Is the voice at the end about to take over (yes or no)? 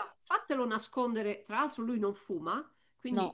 no